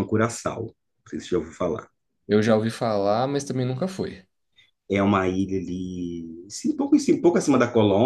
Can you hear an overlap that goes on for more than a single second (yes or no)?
no